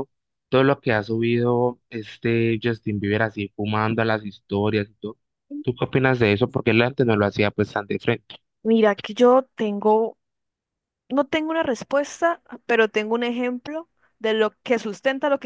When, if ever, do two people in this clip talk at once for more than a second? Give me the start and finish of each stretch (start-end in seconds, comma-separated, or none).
none